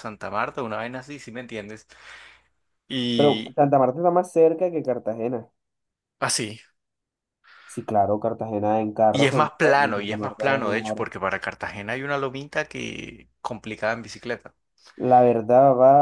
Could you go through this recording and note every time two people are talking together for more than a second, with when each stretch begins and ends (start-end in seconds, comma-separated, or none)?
9.1-11.0